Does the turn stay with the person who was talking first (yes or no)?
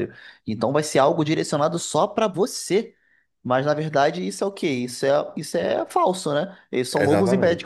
no